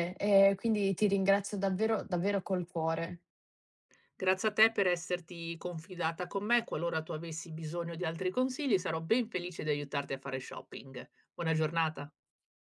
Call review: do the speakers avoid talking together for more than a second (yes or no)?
yes